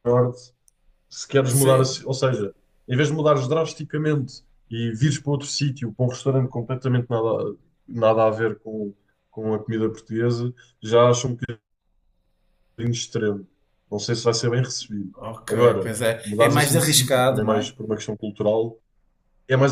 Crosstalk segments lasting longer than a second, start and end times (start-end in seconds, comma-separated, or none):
15.1-17.7